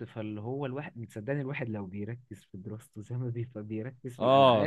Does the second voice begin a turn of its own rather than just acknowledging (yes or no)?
yes